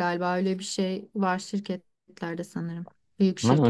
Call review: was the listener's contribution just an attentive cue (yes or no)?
no